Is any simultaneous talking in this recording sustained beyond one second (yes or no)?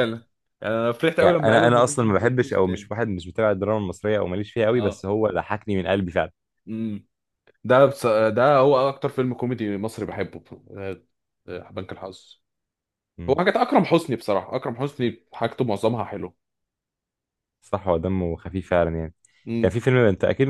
yes